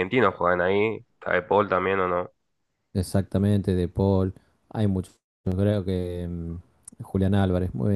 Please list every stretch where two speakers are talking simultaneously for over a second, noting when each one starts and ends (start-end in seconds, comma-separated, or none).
none